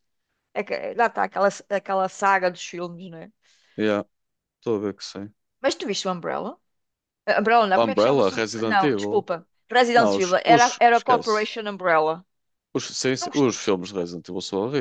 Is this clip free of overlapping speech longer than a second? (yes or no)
no